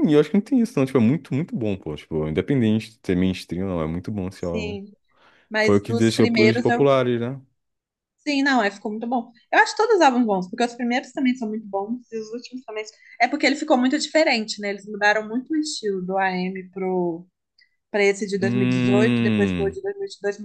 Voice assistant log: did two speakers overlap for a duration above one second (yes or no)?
yes